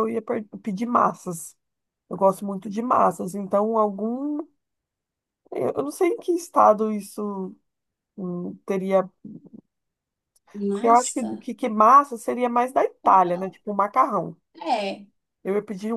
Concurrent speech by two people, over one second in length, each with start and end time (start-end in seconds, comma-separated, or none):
none